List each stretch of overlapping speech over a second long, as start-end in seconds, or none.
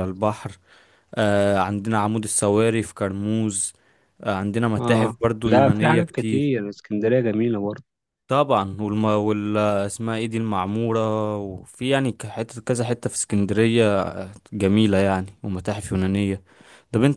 4.8-6.5